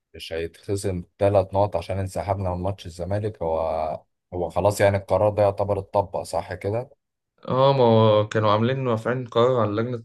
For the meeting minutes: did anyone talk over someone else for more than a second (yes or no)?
no